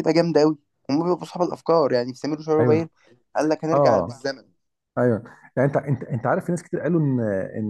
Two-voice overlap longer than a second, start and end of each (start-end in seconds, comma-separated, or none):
none